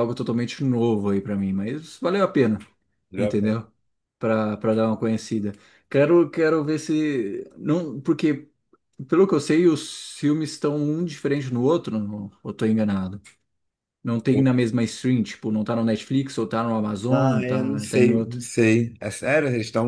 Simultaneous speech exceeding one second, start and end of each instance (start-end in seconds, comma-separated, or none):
17.1-18.4